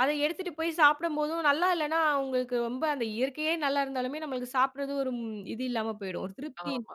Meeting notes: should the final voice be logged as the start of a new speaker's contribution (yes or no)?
yes